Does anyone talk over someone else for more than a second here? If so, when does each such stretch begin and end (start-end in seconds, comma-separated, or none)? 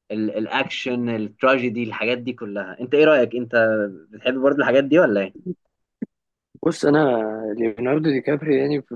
none